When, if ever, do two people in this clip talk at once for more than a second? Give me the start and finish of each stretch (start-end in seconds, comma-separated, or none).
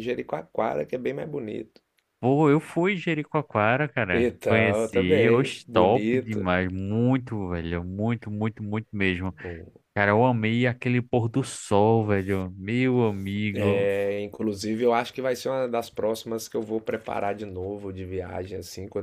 4.1-6.5